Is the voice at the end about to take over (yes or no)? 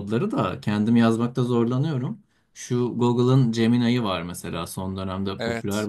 no